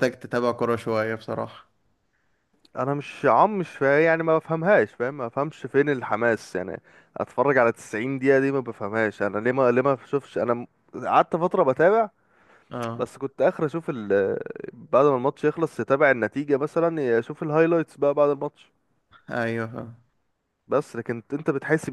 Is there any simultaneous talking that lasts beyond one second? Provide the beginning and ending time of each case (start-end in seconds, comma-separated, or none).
none